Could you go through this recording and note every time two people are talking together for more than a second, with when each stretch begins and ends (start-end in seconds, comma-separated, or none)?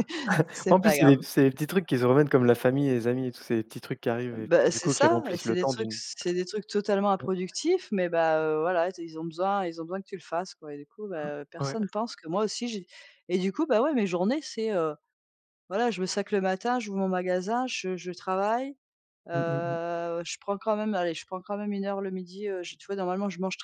4.3-6.0